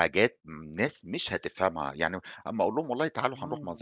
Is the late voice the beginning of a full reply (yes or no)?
no